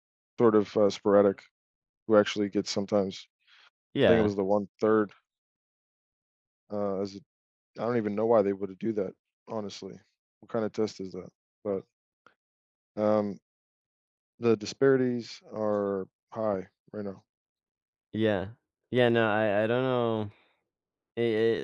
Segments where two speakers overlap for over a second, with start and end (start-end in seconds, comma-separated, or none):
none